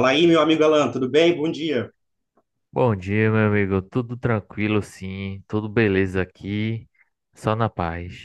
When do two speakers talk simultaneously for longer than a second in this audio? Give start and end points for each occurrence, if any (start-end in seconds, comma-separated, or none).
none